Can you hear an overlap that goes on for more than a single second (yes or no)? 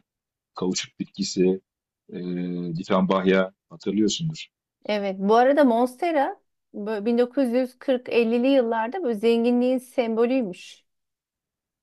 no